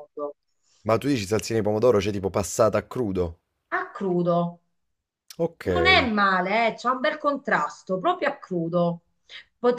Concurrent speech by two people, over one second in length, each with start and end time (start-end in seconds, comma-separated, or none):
none